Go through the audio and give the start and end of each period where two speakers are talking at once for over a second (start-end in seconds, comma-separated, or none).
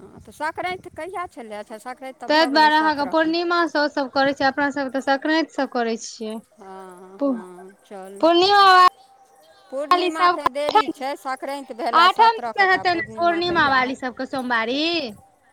11.9-14.3